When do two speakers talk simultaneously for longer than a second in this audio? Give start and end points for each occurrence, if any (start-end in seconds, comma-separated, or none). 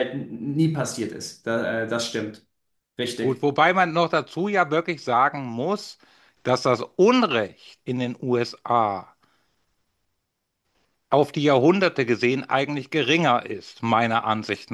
none